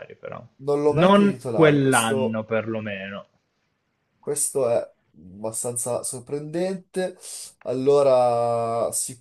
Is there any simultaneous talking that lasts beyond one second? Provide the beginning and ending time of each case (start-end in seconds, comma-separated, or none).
0.8-2.4